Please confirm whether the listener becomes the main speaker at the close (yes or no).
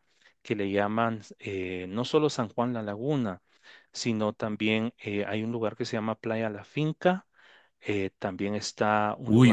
yes